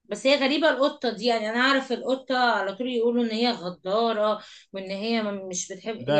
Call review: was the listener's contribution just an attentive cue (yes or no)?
no